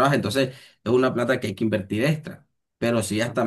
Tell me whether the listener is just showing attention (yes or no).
yes